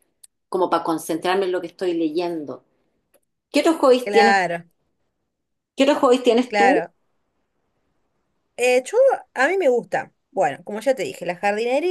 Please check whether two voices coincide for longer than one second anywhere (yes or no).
no